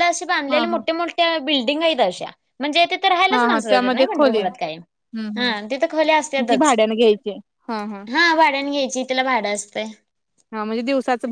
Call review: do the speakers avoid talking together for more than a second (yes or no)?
no